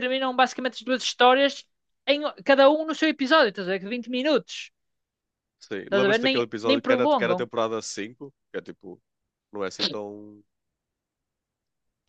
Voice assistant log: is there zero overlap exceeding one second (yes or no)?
no